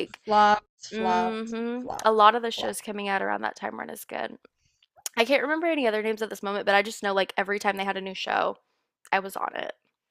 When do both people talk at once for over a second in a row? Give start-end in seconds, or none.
0.9-2.9